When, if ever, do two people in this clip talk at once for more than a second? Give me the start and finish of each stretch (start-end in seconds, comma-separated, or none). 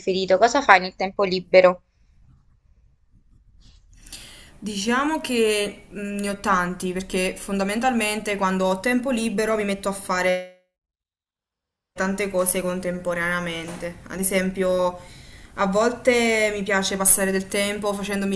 none